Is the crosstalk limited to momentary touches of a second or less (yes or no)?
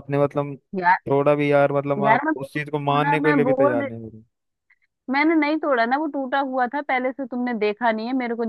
no